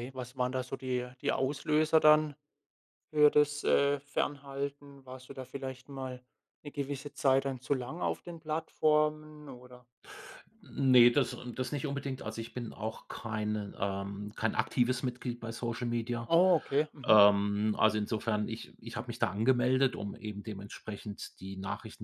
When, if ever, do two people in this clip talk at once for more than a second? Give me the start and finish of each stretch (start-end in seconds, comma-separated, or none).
none